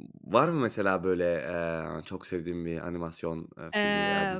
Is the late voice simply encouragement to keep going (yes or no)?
no